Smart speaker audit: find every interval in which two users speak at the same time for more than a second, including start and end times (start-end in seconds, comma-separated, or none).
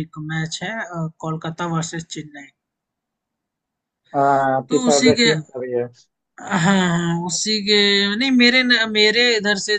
none